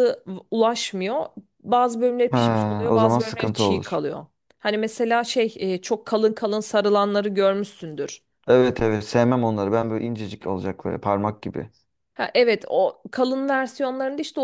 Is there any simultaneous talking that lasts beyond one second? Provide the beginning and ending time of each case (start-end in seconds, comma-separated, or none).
2.3-4.0